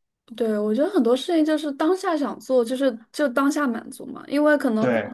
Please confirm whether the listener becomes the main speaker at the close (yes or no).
no